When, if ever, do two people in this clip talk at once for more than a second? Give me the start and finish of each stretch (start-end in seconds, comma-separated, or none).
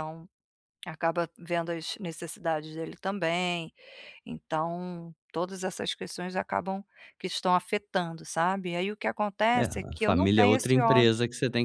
9.6-11.1